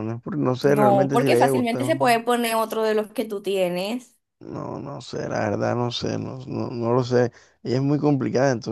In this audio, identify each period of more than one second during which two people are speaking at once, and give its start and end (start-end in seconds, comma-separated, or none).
0.6-2.1